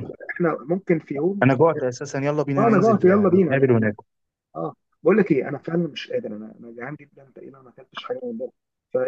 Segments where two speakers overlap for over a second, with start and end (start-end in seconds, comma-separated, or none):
2.6-3.9